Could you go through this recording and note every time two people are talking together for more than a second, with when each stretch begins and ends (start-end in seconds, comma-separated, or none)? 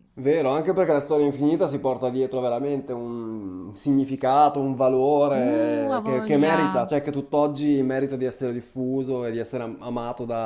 5.3-6.9